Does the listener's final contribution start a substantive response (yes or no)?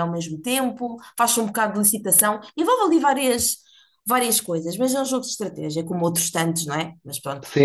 yes